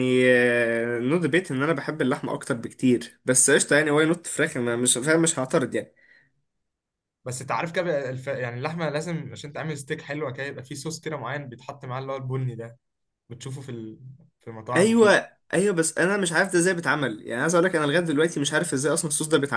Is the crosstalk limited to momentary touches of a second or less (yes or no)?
yes